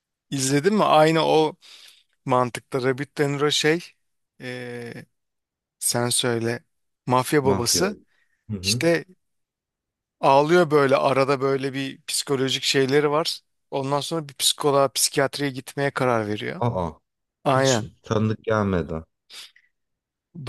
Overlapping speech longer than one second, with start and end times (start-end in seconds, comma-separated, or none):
none